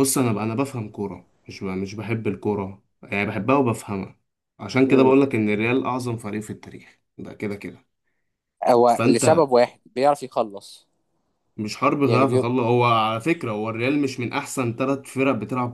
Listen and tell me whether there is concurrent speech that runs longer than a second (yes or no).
no